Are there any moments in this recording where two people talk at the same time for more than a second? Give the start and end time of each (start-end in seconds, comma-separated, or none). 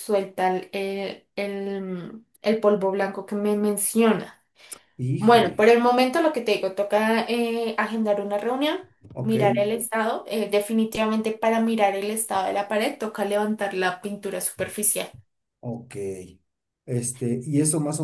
none